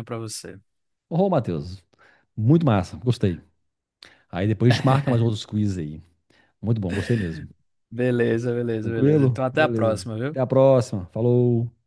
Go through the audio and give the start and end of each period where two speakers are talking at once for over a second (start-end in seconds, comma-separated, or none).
8.8-10.5